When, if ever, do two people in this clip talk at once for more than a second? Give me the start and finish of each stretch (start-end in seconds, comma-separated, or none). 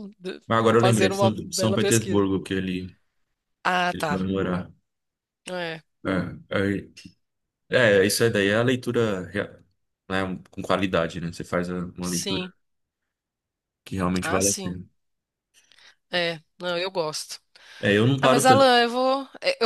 0.8-2.3